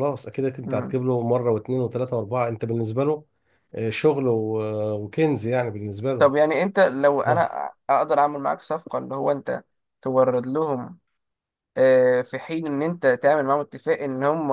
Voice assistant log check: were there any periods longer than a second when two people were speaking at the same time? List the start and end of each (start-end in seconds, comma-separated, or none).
none